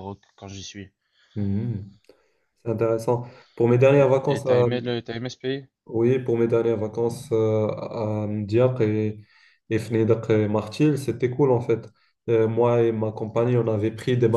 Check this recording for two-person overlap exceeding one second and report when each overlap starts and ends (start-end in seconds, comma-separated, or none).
none